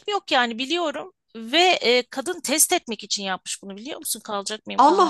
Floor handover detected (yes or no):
yes